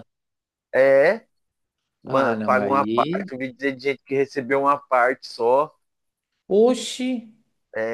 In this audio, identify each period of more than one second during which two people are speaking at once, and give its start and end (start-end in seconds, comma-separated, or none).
2.1-3.3